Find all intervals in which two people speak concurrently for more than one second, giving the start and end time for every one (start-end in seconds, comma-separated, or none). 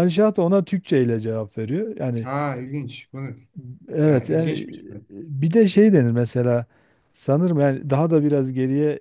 none